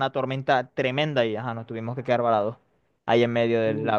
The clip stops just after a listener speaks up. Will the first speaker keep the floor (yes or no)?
yes